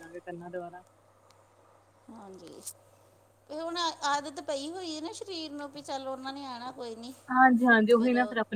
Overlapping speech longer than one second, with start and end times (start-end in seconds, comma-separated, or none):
none